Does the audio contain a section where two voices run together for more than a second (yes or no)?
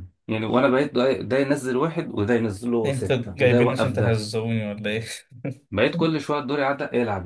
yes